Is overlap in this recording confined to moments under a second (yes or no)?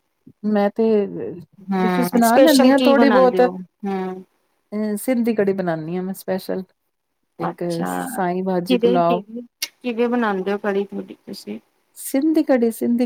no